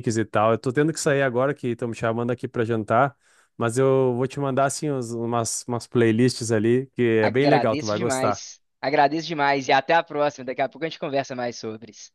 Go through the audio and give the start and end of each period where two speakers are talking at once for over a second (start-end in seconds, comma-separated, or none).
7.2-8.4